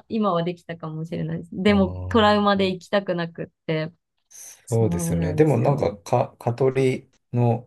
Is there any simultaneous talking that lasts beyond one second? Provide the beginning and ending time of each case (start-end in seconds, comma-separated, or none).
4.7-5.9